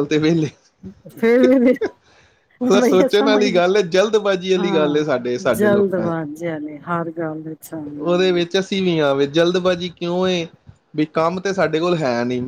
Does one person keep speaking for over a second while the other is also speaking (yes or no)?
no